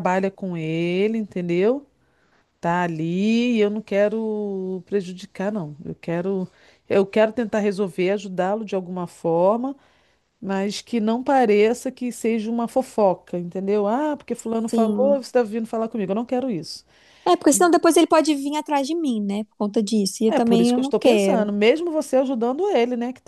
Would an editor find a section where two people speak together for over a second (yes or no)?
yes